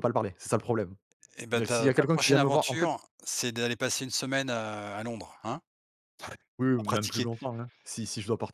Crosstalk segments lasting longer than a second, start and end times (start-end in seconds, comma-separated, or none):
1.5-2.9